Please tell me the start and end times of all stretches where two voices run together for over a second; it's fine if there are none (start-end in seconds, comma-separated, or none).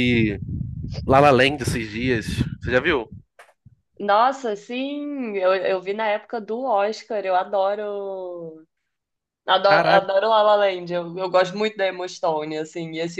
none